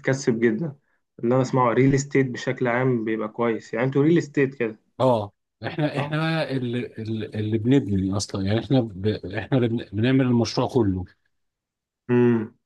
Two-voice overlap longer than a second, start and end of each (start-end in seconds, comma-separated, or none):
none